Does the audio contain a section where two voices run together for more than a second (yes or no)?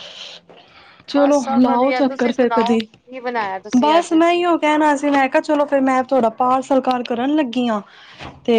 yes